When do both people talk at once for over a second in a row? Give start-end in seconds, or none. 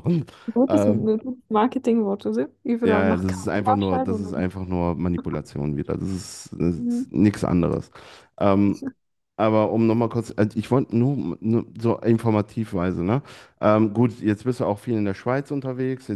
2.8-4.5